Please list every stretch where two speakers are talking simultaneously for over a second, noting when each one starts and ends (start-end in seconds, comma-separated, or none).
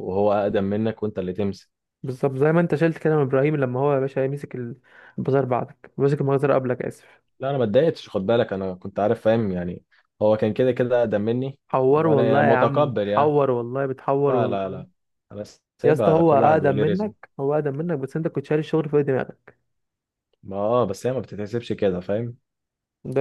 11.9-13.3, 15.8-17.1